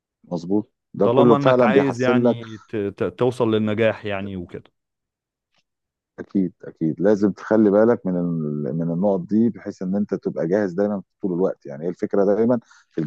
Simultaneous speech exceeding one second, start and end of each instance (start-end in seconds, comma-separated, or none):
1.0-2.4